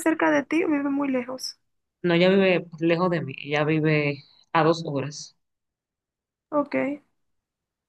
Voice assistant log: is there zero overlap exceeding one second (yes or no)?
yes